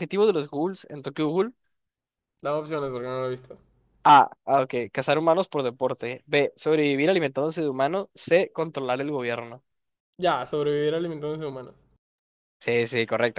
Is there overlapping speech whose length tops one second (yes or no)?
no